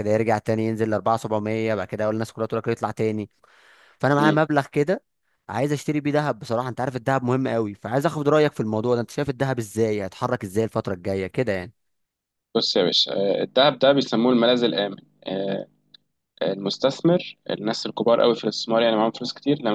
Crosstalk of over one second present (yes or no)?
no